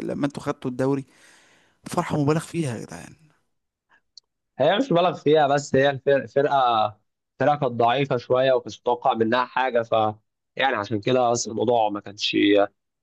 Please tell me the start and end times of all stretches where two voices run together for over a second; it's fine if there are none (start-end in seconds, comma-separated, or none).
none